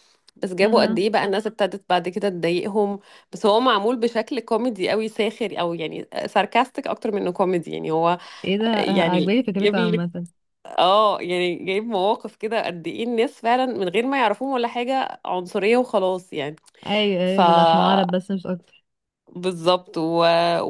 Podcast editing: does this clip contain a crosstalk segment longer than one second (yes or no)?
no